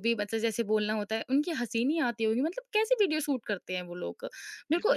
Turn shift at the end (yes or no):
yes